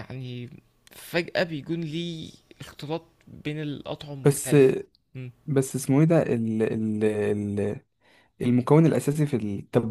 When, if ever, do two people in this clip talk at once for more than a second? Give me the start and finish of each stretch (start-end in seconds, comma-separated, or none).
none